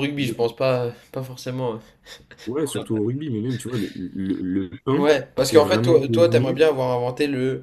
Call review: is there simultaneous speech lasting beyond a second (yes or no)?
yes